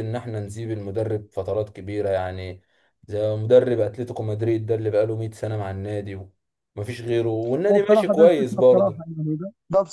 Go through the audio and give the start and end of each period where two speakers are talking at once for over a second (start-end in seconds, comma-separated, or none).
7.7-9.1